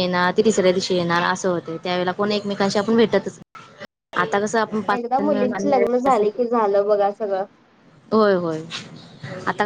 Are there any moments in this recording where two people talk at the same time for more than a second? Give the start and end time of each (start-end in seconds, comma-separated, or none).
none